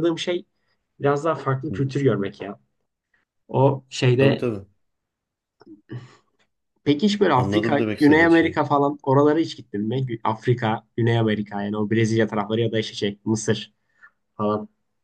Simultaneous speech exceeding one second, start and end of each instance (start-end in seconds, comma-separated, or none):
7.3-8.6